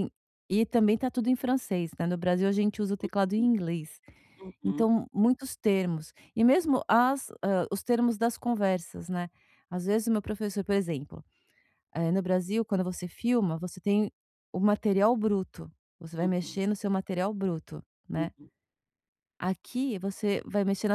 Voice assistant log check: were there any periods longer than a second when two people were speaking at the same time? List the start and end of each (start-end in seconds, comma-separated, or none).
none